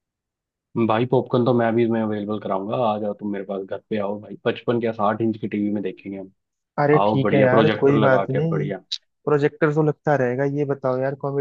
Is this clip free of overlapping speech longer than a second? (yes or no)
no